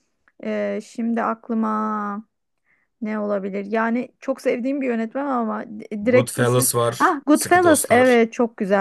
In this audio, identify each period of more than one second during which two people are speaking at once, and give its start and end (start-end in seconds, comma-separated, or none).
6.0-8.2